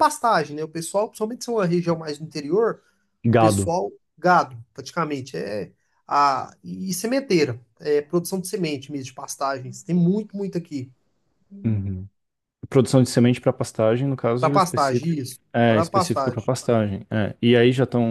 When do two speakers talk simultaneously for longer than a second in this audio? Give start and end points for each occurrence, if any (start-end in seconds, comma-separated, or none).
14.4-16.5